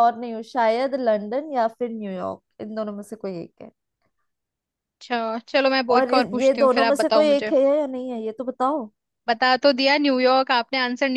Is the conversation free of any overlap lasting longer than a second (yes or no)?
no